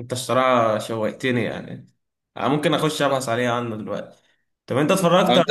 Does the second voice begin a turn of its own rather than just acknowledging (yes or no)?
no